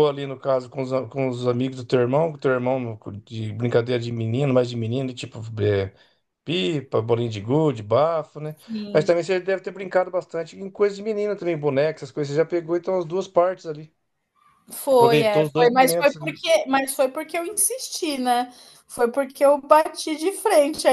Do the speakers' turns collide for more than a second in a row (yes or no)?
yes